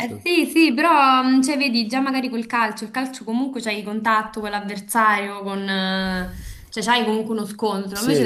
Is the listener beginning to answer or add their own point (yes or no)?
no